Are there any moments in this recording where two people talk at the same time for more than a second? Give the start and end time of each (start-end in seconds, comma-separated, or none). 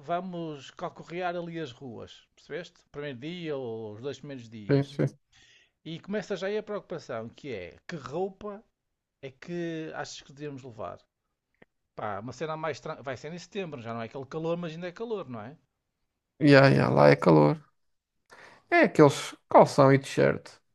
none